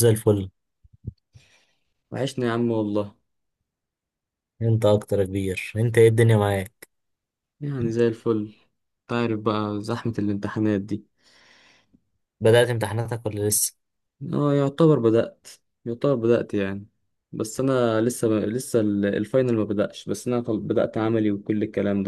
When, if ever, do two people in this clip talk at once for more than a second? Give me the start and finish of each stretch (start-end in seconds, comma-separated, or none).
none